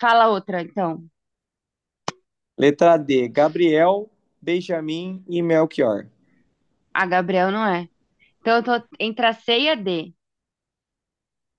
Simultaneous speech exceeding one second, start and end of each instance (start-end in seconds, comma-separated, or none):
none